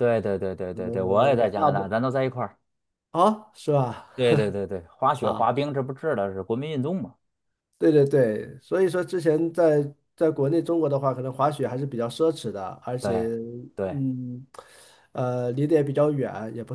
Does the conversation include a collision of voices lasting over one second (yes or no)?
yes